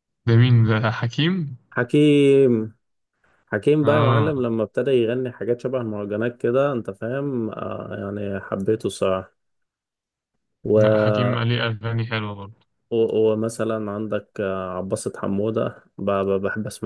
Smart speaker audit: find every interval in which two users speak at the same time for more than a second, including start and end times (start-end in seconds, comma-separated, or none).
none